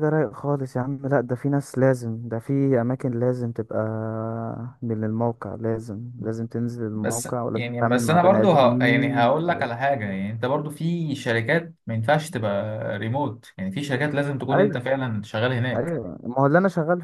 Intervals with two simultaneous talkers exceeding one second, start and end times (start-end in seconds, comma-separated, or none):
7.0-9.7